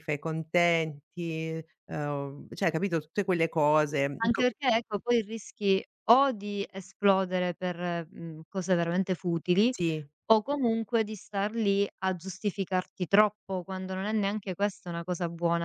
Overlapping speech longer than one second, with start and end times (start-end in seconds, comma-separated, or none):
none